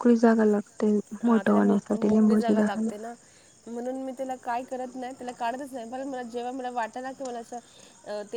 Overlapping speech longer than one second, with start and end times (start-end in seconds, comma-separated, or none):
1.3-2.9